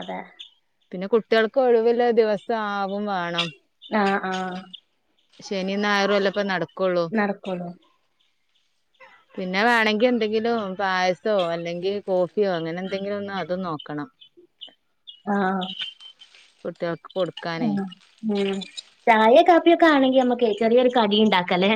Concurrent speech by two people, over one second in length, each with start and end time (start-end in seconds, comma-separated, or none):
none